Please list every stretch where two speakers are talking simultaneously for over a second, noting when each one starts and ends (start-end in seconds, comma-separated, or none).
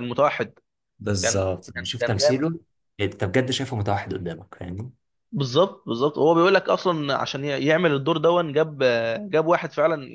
1.2-2.5